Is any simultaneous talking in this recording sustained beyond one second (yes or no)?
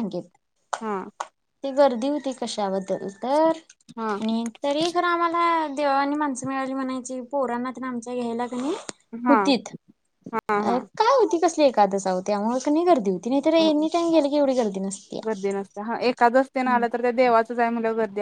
no